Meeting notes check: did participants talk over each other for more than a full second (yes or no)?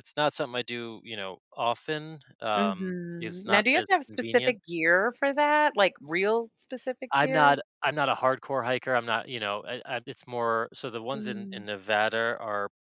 yes